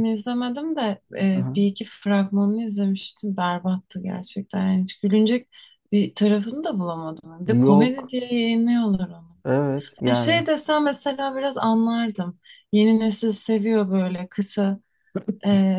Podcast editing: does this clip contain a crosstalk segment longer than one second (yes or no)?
no